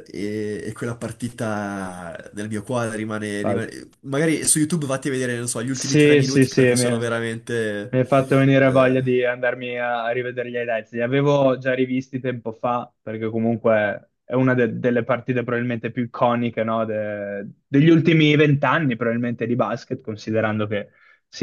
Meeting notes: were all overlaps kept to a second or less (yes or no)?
no